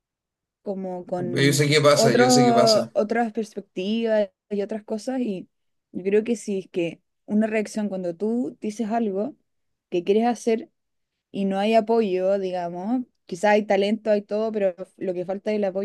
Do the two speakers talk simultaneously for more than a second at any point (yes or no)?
yes